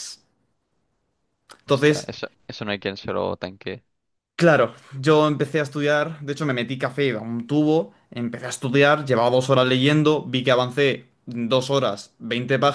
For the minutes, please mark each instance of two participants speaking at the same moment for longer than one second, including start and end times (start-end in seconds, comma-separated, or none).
none